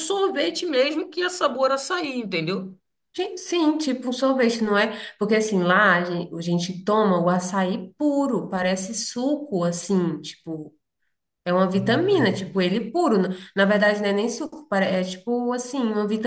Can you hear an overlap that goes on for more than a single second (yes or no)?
no